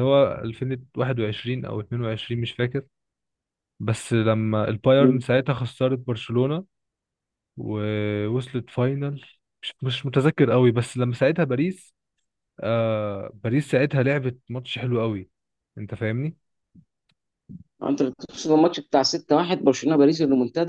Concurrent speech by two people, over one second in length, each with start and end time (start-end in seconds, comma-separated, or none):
none